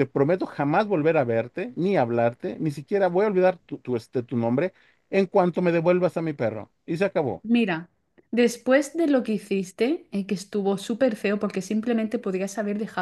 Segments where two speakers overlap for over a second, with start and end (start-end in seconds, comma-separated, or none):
none